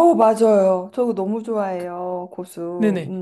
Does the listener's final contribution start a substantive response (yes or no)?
yes